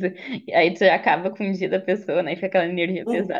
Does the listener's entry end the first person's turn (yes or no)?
yes